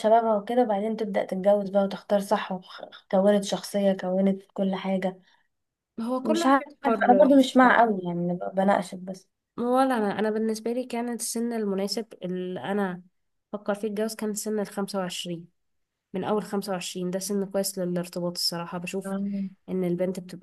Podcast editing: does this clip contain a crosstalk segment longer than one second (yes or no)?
yes